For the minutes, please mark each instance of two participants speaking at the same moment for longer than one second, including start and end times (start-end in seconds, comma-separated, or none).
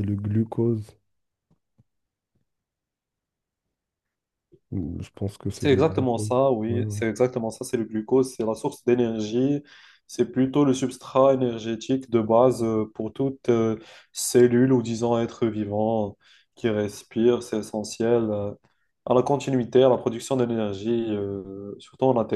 5.5-7.0